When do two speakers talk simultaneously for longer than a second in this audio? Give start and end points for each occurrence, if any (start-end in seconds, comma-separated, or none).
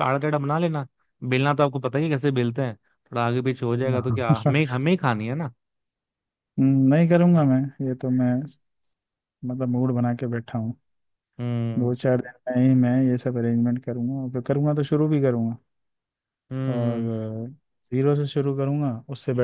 none